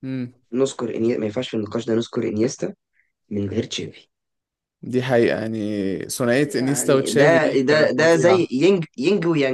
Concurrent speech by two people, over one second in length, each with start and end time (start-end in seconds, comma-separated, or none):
6.4-8.5